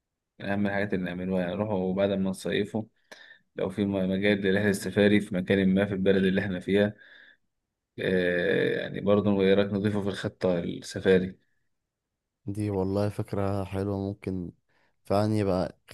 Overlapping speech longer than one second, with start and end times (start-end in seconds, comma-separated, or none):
none